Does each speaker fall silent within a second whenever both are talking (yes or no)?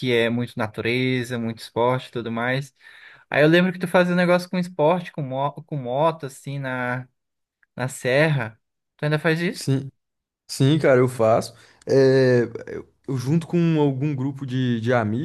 yes